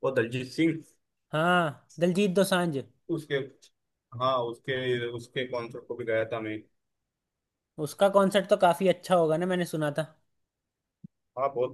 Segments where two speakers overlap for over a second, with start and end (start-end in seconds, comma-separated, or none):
none